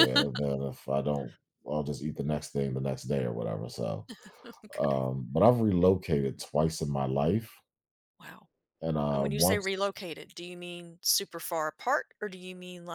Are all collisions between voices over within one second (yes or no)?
yes